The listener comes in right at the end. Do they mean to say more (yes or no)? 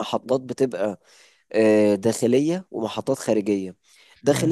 no